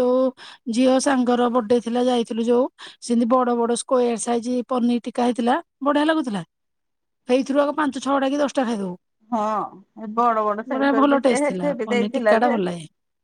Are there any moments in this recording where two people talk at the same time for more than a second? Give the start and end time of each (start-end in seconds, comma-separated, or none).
10.7-12.6